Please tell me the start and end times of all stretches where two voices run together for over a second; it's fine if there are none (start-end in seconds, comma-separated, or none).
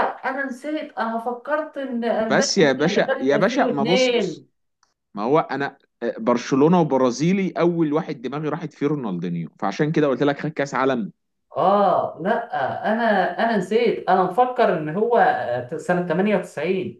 2.2-4.5